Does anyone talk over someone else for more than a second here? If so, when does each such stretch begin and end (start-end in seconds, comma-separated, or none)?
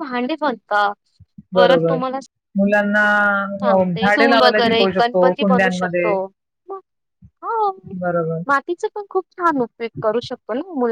3.7-6.1